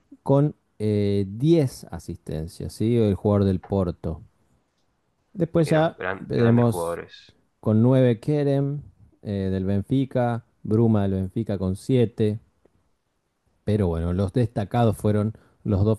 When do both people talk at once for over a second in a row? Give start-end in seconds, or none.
5.6-7.0